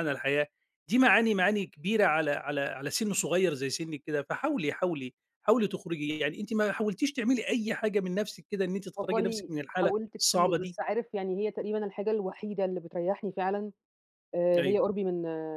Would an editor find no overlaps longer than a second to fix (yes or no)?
no